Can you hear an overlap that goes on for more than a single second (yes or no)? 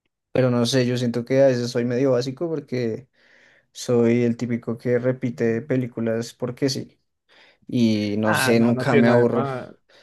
yes